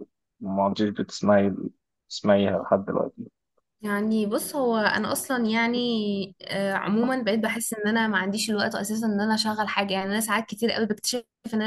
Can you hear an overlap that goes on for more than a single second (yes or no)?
no